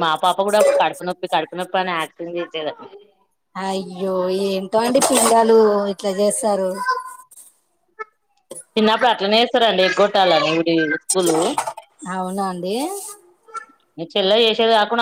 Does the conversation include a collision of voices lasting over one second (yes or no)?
no